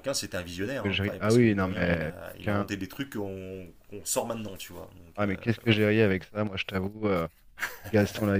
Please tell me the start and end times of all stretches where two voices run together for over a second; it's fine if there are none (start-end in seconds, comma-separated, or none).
0.6-2.7